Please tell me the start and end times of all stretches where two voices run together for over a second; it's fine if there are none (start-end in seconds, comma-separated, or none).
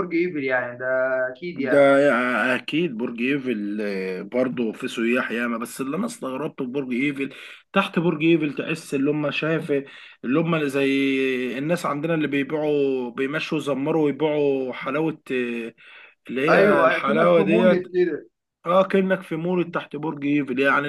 16.5-17.8